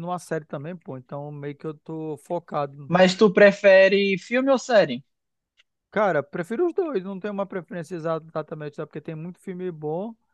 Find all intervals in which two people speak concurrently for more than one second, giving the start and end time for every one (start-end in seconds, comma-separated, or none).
none